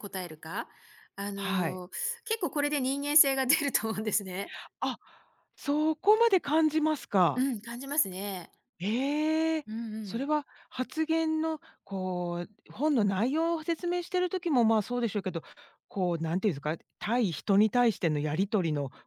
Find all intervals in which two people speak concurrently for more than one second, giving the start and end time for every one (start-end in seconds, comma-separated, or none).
none